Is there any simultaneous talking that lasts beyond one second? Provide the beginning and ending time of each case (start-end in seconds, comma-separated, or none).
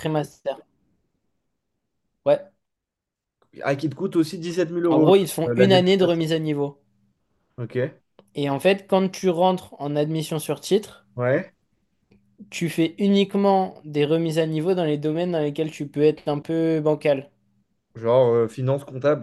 4.9-6.3